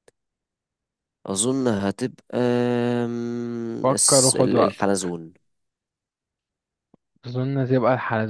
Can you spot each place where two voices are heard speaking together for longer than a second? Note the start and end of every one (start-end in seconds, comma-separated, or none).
3.8-5.2